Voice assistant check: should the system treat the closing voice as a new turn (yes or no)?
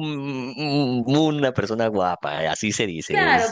yes